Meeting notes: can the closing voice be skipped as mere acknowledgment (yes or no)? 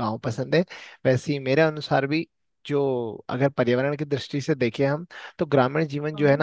yes